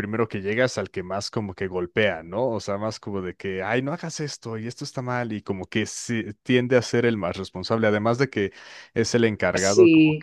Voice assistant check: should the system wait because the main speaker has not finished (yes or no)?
yes